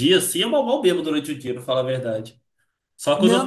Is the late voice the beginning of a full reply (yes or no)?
yes